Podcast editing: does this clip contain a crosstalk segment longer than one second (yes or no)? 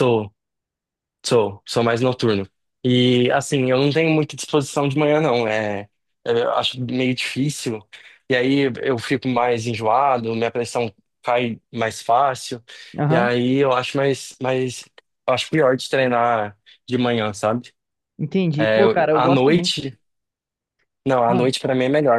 yes